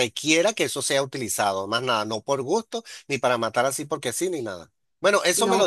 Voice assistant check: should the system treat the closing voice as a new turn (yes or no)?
yes